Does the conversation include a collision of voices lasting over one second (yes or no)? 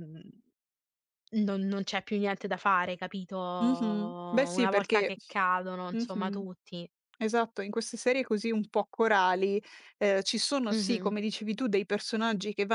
yes